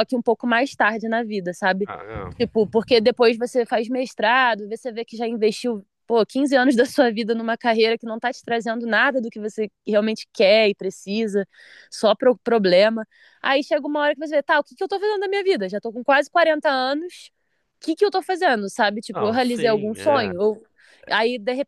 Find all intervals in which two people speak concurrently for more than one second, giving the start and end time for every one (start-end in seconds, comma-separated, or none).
19.1-20.3